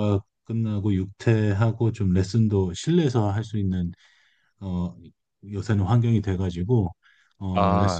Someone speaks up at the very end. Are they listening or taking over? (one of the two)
listening